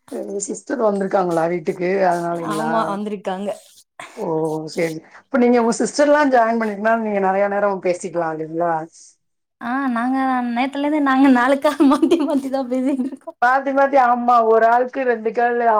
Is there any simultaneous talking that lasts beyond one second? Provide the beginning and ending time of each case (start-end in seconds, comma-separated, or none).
none